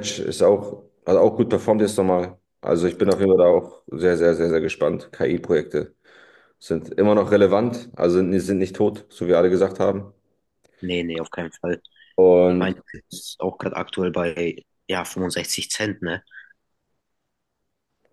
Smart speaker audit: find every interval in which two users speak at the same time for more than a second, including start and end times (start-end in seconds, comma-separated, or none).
none